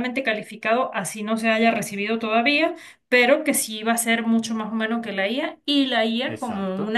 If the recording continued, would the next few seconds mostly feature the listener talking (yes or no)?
no